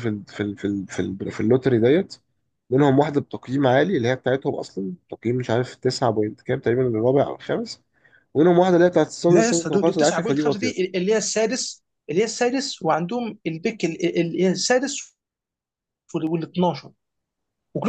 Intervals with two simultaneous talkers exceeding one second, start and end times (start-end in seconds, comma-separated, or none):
9.3-10.9